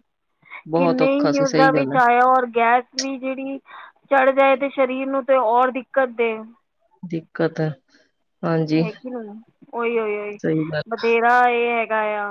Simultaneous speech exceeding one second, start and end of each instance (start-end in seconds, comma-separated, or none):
0.7-2.0